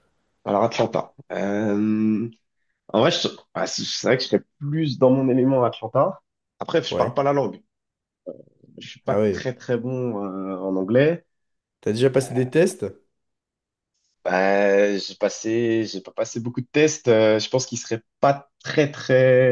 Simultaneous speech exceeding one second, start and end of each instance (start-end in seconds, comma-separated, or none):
none